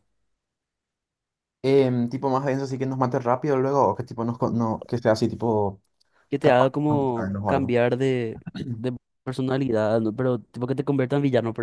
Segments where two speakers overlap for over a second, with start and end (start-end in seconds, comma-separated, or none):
6.4-7.8